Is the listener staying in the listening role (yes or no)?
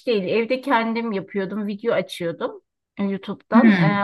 yes